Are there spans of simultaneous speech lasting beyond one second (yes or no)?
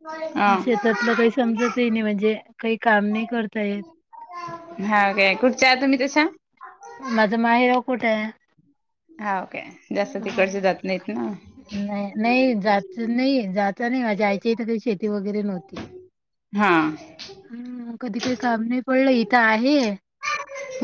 no